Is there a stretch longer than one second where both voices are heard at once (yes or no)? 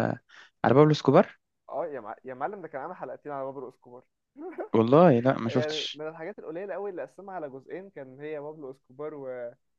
no